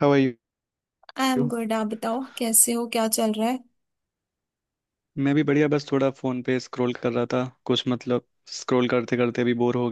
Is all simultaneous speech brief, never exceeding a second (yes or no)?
yes